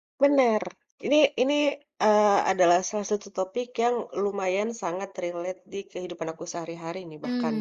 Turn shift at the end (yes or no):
yes